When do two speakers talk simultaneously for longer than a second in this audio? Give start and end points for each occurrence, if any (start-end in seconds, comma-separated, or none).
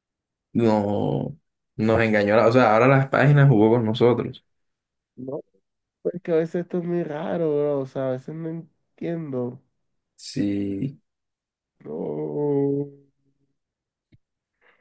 none